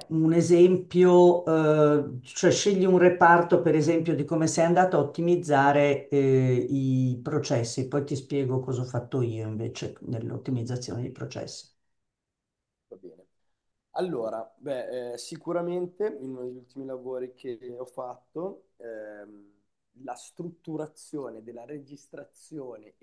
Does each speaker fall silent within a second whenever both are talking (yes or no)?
yes